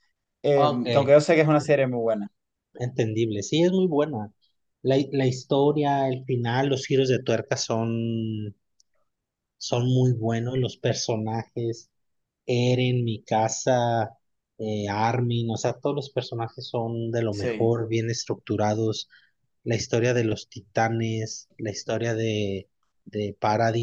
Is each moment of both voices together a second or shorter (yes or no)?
yes